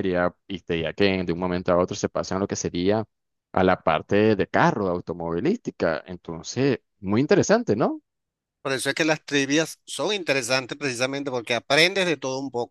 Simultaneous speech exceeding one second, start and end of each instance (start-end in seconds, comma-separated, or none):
none